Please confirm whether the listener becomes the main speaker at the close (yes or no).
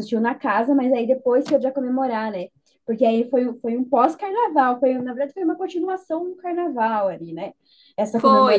no